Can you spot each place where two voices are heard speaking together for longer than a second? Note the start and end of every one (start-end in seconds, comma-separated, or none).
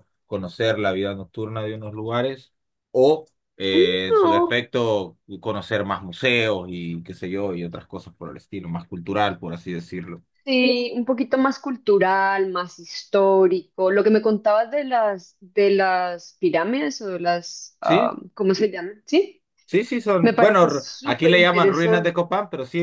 20.2-22.1